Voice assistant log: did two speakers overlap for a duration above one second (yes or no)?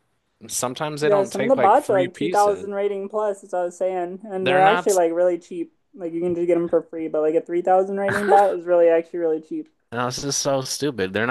yes